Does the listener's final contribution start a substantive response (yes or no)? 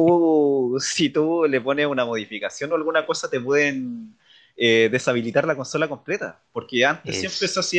no